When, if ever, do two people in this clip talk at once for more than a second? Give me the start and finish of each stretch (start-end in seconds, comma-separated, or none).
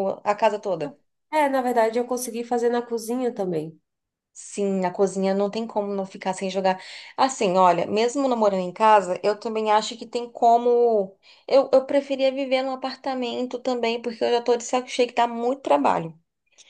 none